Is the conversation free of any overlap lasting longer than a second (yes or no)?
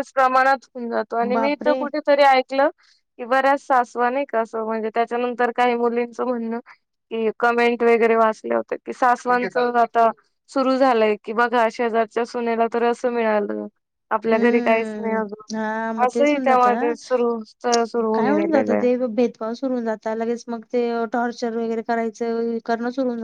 no